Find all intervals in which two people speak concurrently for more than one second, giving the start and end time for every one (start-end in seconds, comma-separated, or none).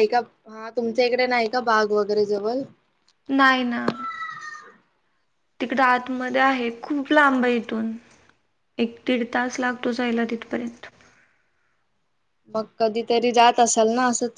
none